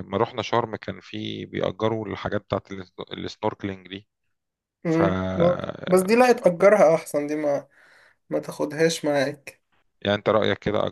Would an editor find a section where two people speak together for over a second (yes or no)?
no